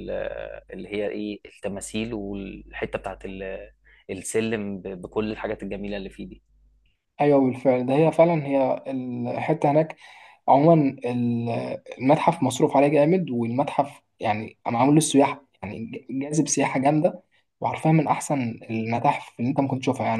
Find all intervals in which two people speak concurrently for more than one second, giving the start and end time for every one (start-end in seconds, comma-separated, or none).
none